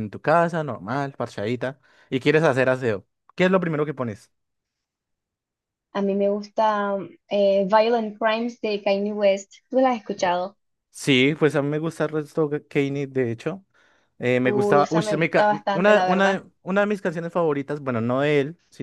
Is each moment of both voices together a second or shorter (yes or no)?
no